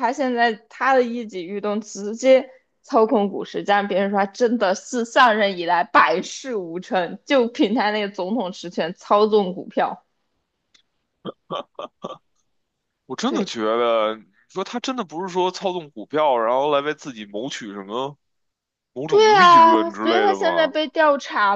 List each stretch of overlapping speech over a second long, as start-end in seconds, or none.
19.1-20.8